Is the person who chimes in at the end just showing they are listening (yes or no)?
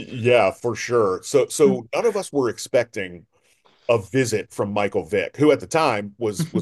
yes